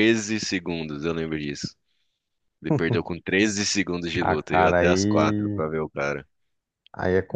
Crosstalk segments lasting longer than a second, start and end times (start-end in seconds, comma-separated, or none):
4.2-5.6